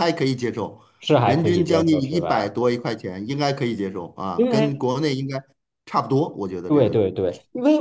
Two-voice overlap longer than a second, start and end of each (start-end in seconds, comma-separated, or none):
1.2-2.5